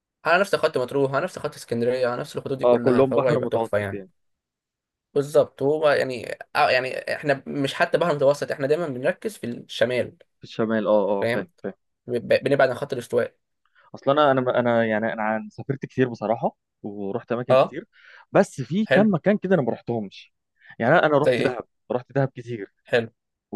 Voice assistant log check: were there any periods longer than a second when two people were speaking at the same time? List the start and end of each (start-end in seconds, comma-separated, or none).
2.6-4.0